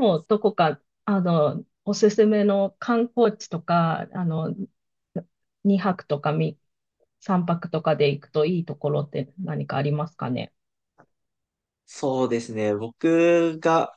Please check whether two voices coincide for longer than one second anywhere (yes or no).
no